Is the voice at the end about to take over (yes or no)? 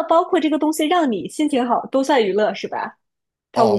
yes